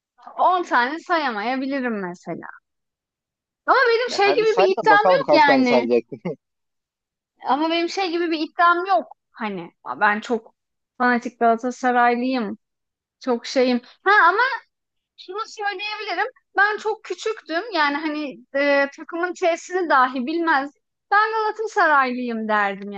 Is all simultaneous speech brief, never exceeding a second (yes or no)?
no